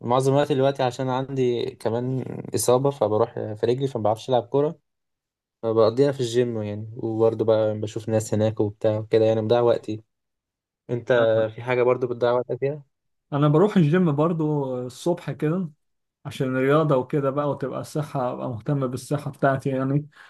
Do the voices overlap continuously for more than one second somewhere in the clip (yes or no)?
no